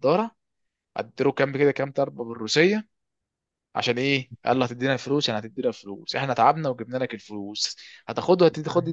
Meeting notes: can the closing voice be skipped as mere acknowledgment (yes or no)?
yes